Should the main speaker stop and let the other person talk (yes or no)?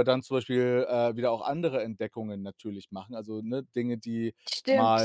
yes